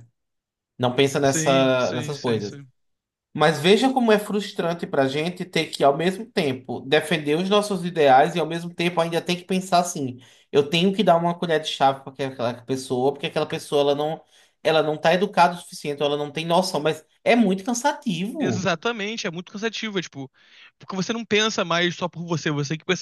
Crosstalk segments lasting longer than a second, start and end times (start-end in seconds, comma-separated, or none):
1.2-2.6